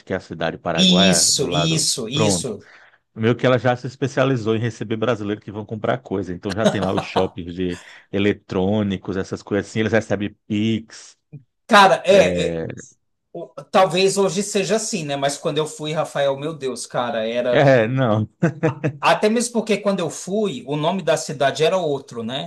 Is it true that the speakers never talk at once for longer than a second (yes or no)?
no